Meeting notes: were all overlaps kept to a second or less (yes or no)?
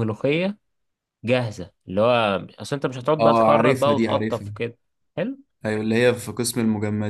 no